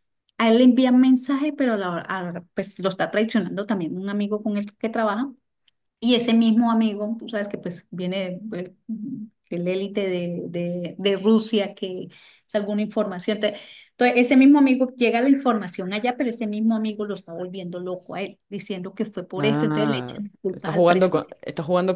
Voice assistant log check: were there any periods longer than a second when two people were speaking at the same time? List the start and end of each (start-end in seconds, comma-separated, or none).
19.4-21.4